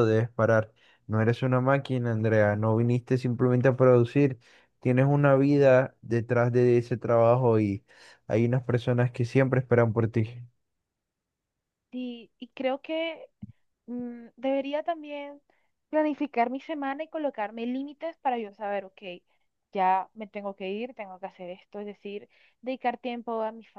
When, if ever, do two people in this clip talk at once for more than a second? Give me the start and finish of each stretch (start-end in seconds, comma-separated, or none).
none